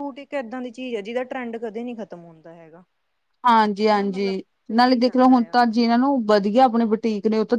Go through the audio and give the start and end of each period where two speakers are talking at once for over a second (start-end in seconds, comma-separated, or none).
3.9-5.6